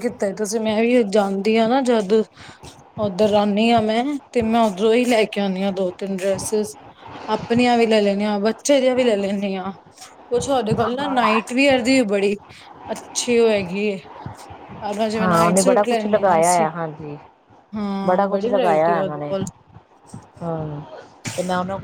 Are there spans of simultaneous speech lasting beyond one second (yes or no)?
yes